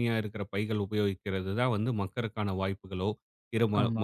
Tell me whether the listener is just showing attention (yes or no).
yes